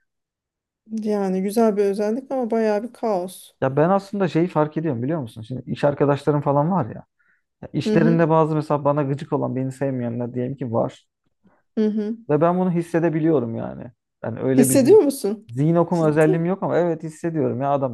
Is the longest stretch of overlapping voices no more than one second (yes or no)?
yes